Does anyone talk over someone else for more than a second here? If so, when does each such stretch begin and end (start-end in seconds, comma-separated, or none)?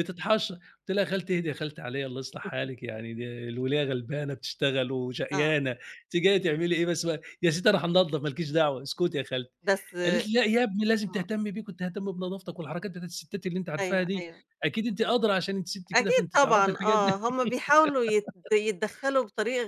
15.9-17.2